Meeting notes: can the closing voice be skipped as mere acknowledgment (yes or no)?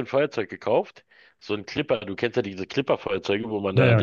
yes